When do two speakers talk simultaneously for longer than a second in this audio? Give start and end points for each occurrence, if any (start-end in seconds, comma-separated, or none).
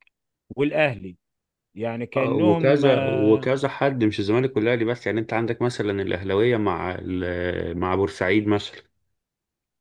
2.2-3.5